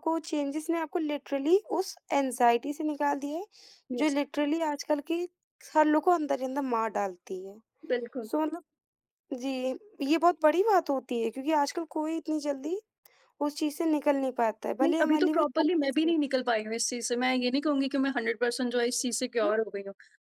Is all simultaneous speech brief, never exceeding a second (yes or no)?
no